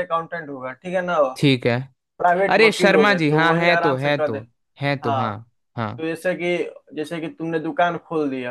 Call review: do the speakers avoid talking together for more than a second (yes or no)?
no